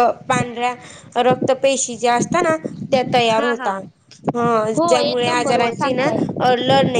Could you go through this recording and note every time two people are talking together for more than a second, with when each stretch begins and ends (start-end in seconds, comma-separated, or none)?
4.8-6.1